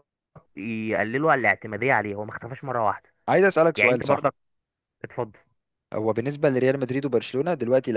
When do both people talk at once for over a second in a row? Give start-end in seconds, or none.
none